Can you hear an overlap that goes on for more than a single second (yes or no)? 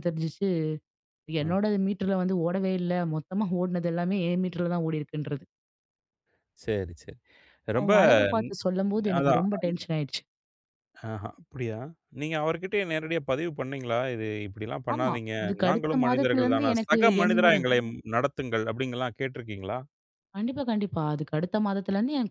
yes